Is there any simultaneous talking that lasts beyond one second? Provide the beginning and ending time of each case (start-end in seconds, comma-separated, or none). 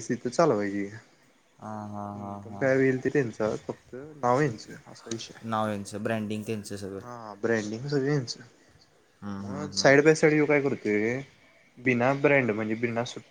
none